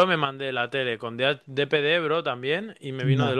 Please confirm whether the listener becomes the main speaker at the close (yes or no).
no